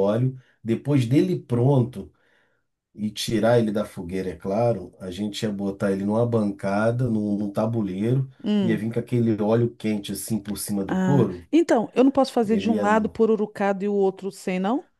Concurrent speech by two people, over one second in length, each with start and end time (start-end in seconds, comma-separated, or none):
none